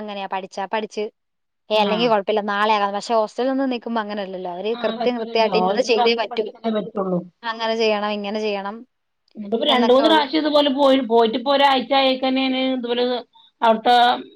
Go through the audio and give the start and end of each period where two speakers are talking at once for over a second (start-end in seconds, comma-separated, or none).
4.8-6.4